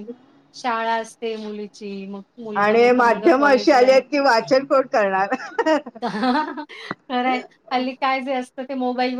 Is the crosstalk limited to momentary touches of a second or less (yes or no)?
no